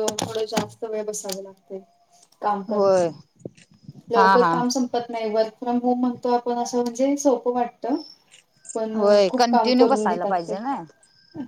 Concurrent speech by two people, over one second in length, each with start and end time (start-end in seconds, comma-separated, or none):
9.0-10.5